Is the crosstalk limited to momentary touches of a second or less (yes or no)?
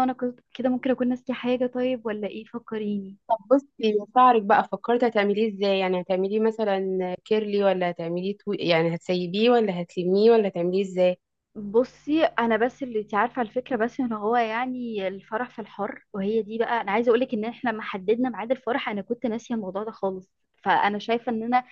yes